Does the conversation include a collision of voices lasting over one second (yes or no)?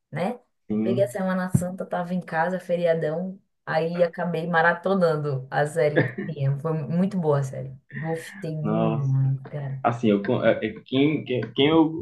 no